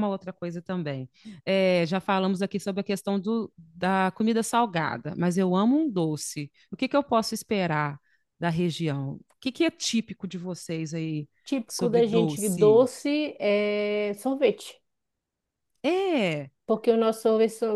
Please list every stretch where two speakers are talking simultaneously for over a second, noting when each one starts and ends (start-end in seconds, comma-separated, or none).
11.7-12.8